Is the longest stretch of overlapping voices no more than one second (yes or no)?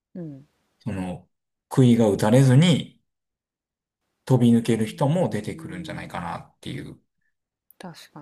no